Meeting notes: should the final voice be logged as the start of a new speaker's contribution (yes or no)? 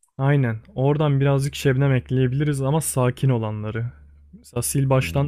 no